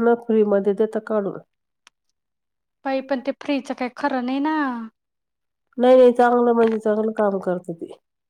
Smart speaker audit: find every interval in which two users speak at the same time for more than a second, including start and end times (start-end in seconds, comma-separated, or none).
none